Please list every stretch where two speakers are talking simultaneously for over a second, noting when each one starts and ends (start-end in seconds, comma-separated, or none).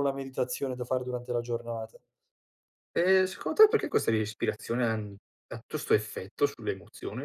none